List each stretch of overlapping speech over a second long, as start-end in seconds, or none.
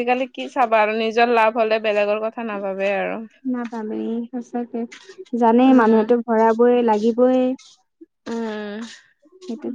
none